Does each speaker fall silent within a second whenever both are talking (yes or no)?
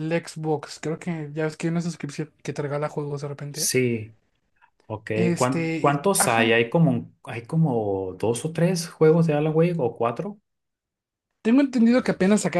no